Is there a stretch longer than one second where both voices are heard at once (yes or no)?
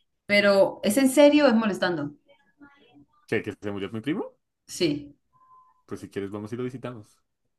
no